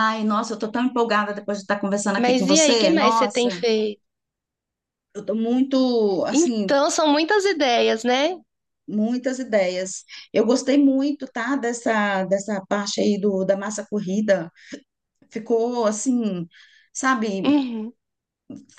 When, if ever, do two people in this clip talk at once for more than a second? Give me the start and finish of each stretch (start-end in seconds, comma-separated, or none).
2.2-3.5